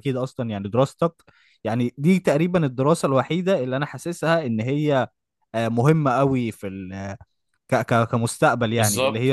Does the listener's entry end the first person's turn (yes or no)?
yes